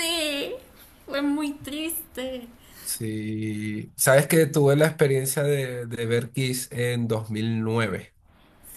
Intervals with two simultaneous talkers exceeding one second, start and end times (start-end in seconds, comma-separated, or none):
none